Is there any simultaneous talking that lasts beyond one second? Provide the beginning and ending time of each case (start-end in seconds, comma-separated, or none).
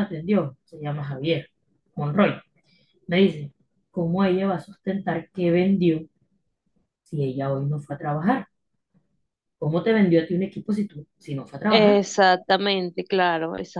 none